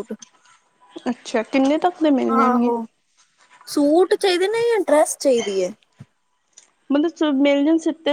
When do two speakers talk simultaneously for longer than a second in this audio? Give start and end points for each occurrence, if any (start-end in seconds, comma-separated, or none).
none